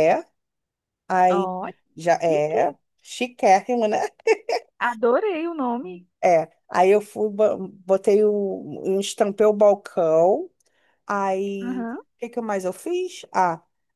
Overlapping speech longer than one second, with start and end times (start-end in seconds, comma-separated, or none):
none